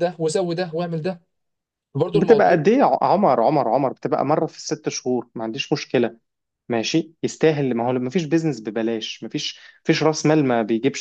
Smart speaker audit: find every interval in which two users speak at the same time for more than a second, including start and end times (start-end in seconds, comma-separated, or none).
none